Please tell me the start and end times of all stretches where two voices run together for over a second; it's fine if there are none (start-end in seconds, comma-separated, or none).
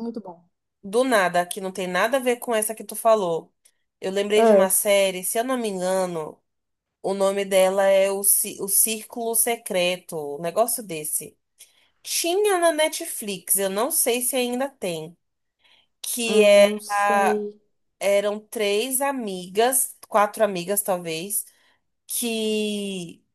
16.2-17.4